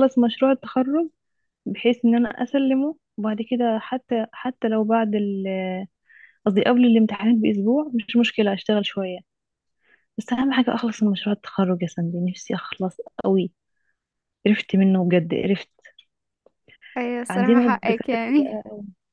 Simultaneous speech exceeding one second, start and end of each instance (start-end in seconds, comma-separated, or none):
17.3-18.6